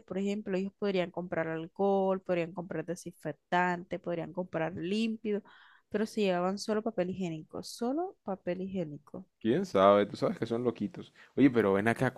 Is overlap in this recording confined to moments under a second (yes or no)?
yes